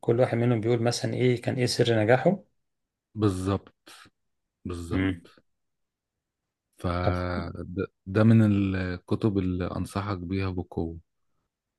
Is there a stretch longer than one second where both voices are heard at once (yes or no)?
no